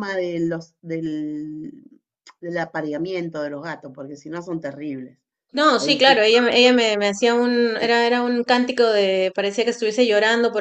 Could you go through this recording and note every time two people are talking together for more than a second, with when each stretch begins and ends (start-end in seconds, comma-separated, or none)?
none